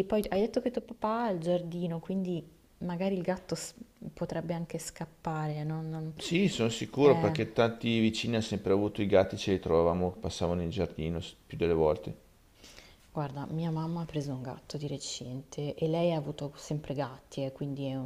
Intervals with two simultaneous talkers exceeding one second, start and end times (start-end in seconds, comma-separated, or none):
none